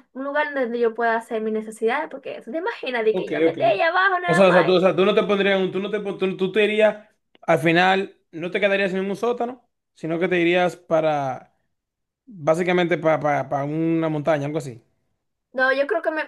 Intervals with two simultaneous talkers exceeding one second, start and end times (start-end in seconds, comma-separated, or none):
none